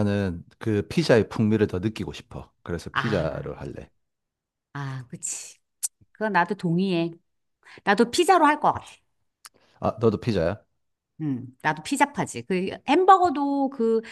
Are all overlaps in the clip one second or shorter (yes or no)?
yes